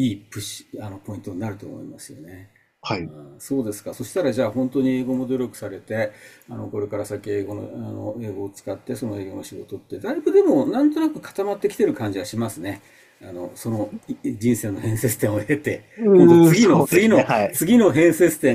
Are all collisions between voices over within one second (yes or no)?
no